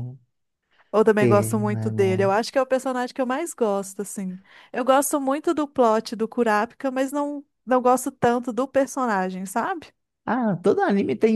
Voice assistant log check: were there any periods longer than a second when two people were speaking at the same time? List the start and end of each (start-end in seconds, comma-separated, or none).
1.2-2.4